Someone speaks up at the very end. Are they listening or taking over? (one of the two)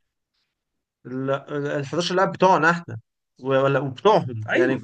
listening